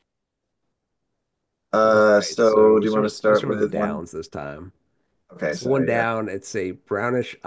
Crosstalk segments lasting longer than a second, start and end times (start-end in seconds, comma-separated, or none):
1.9-4.0